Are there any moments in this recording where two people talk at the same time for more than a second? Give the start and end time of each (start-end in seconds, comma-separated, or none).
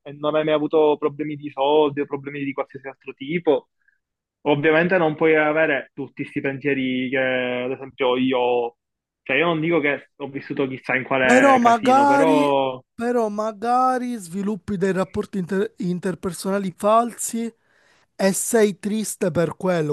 11.2-12.5